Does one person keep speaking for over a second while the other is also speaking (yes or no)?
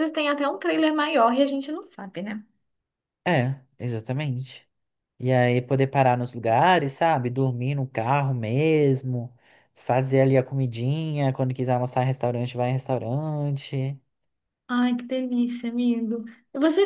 no